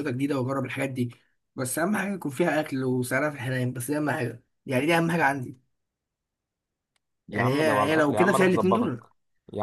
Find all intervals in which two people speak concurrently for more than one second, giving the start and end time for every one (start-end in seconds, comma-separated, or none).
7.3-9.1